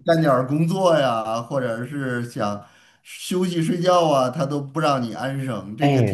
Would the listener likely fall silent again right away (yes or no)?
no